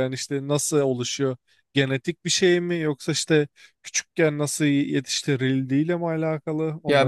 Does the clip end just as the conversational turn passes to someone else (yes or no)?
yes